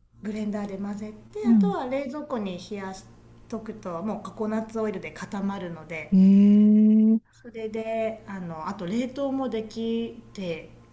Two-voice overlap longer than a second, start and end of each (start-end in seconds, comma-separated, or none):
none